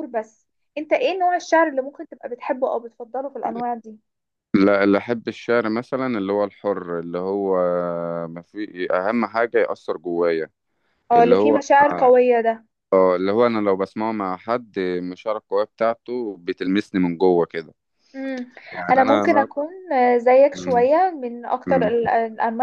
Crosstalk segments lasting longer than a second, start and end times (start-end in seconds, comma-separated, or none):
none